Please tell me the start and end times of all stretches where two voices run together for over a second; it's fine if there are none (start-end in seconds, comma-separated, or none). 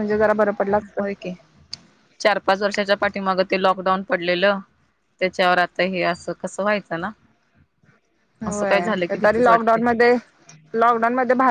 8.4-9.8